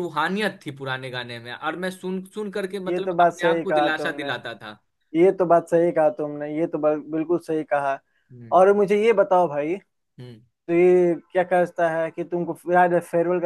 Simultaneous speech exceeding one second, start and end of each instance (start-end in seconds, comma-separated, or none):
2.9-4.3